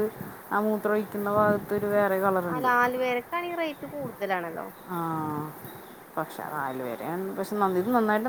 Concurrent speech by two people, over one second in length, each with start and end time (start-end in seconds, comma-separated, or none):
none